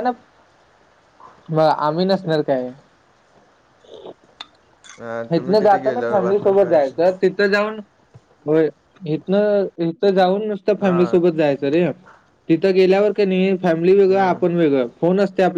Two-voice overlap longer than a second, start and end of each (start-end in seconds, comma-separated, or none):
5.3-7.2